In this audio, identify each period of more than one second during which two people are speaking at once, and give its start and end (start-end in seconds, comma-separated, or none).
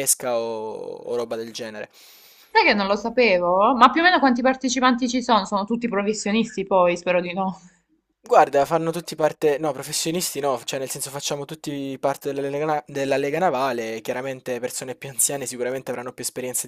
none